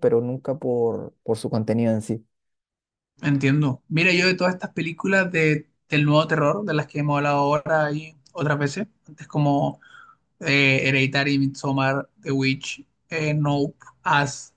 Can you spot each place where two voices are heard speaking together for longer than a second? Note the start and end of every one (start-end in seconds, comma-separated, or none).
none